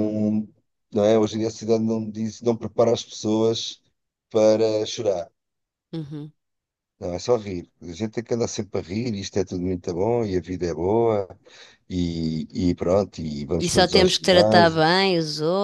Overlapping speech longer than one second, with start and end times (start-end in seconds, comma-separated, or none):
13.6-14.8